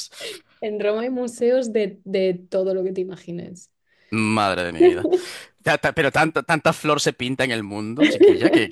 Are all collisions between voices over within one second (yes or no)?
yes